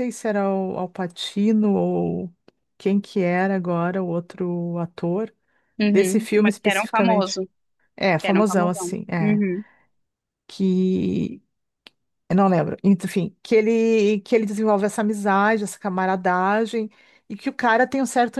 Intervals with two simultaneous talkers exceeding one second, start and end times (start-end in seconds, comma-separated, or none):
5.9-7.4, 8.2-9.4